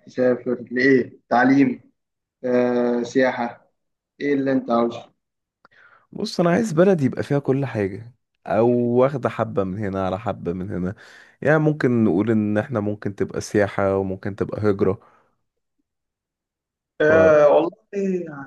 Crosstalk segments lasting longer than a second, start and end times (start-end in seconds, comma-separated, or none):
none